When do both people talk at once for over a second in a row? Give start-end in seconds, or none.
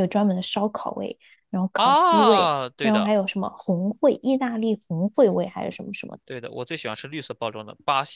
1.8-3.1